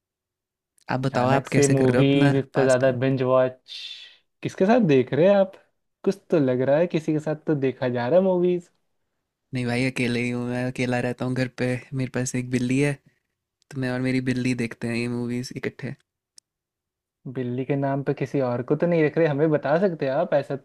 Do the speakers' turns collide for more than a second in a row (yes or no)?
yes